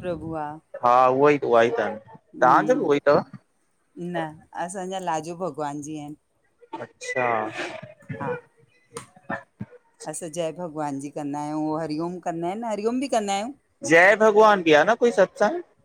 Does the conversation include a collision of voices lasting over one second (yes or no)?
no